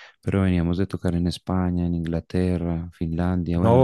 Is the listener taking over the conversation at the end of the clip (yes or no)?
yes